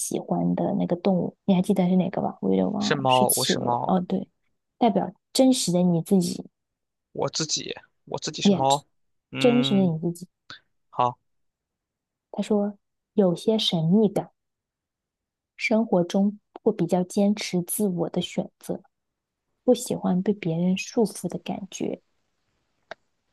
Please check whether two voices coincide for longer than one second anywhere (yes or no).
yes